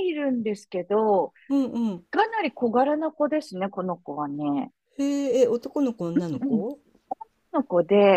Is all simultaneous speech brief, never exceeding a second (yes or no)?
yes